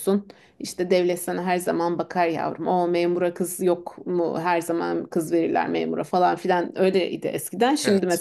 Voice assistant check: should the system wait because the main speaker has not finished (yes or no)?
yes